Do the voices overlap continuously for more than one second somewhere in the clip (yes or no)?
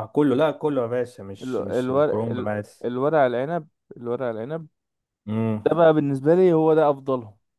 yes